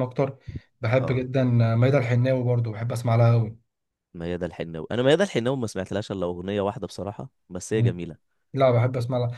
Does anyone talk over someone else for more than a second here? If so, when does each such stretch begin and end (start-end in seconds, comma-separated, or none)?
none